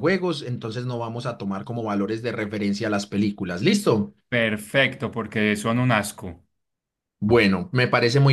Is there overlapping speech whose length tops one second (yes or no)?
no